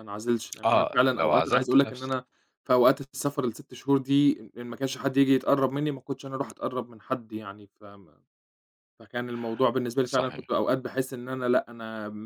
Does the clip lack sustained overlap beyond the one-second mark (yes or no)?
no